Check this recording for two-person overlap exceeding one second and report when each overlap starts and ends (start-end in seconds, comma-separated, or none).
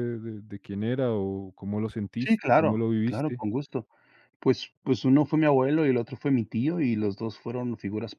2.2-3.4